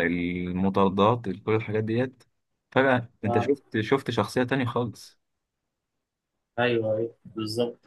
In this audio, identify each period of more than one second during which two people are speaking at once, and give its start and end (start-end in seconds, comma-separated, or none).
none